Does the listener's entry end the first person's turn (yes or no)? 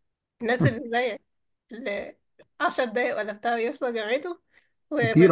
yes